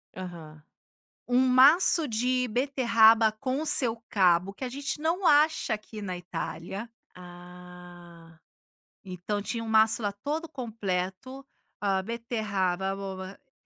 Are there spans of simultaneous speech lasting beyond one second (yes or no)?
no